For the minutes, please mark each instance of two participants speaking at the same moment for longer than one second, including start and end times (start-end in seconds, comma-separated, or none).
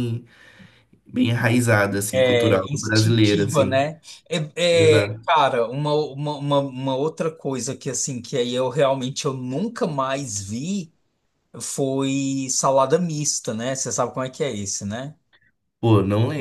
2.1-3.9